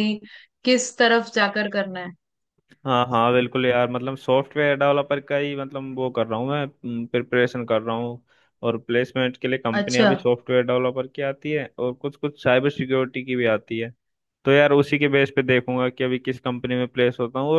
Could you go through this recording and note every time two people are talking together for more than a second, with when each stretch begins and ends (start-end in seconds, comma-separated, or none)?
none